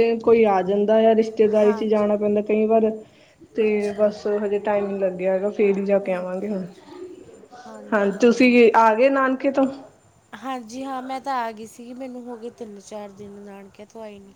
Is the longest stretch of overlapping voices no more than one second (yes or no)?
yes